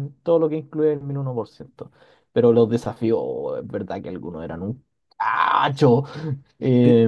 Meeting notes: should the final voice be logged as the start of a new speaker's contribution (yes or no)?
yes